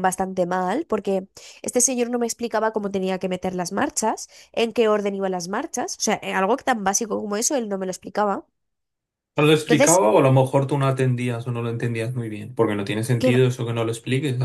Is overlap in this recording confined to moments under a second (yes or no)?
yes